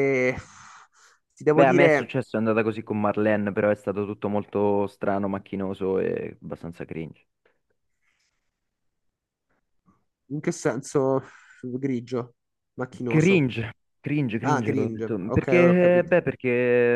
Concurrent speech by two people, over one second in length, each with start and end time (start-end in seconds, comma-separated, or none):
14.4-16.2